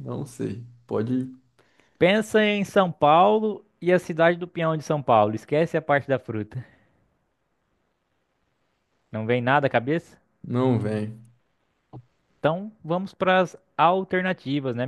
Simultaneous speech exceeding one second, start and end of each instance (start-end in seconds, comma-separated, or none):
none